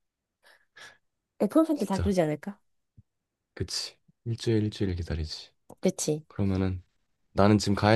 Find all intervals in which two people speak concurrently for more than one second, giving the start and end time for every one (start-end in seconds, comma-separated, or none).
none